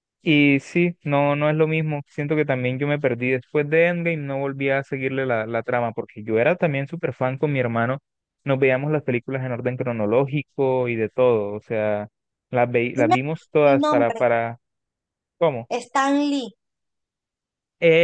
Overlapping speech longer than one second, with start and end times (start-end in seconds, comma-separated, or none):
12.9-14.2